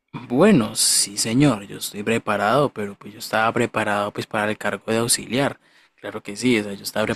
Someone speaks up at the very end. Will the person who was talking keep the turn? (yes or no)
no